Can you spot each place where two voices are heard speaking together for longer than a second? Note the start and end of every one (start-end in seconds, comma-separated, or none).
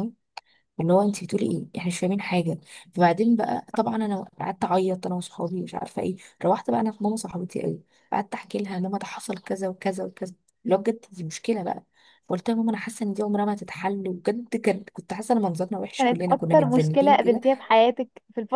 16.0-17.4